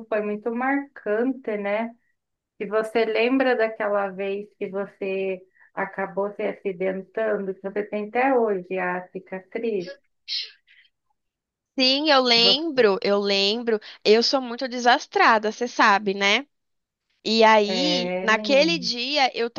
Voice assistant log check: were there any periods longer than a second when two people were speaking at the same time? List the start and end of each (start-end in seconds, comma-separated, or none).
17.6-18.9